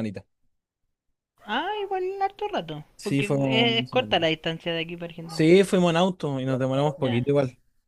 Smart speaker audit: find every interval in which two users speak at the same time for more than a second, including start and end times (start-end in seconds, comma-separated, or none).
3.0-4.2